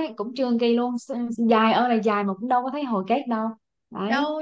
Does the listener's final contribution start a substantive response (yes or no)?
yes